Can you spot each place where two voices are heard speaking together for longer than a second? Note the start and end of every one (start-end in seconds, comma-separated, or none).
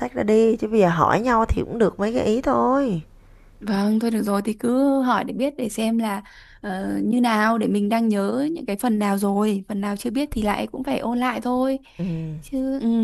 none